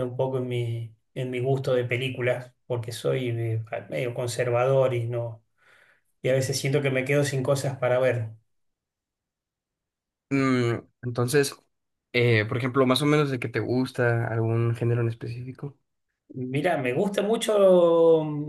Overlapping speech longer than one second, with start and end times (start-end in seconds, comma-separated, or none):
none